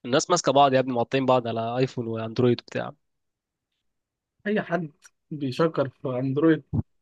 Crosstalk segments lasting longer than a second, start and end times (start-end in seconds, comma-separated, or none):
none